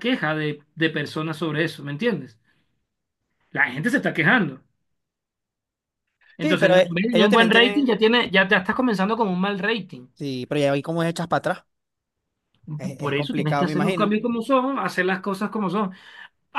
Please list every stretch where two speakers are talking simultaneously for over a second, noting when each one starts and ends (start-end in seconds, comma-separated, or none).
6.4-7.9, 12.8-14.2